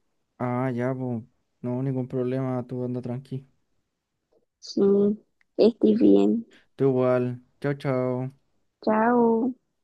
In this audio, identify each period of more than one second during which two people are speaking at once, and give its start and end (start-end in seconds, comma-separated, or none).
none